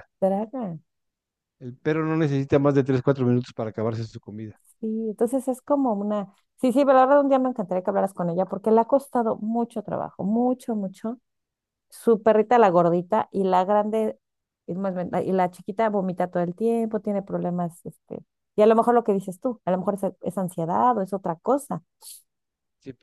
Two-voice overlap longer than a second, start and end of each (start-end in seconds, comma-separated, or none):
none